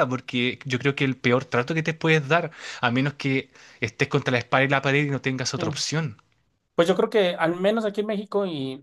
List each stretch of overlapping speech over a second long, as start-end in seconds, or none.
none